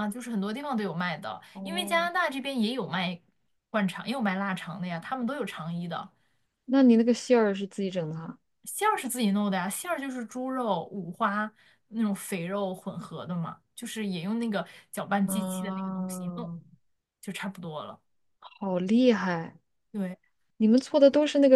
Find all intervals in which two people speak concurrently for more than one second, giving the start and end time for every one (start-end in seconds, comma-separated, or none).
15.3-16.5